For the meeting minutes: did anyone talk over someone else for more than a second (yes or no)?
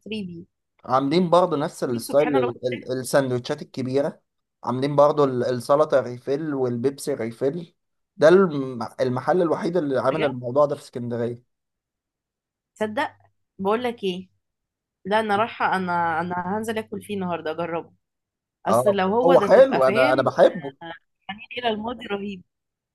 yes